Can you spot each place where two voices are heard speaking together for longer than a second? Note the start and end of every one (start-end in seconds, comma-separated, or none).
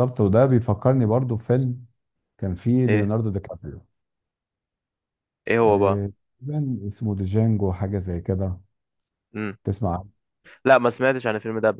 none